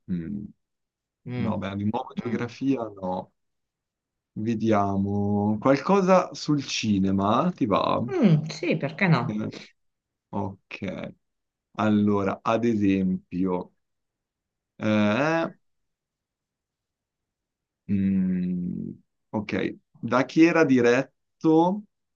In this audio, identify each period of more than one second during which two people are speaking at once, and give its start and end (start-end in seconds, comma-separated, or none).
none